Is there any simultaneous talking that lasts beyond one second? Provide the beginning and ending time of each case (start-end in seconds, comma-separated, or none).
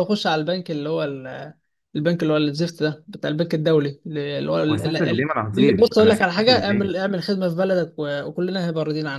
4.7-6.9